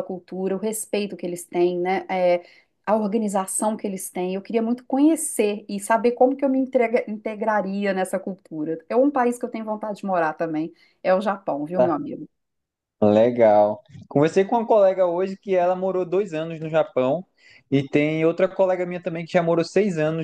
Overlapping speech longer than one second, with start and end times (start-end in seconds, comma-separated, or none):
none